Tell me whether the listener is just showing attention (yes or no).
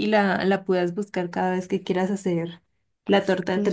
no